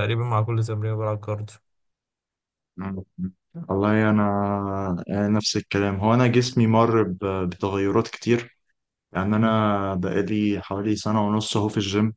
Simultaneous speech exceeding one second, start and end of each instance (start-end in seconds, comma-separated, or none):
none